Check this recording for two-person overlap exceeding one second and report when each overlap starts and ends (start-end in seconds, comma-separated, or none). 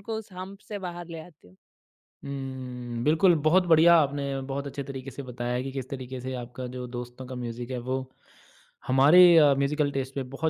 none